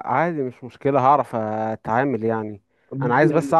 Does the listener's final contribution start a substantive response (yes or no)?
no